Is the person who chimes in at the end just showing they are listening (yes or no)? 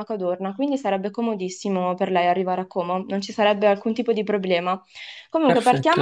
yes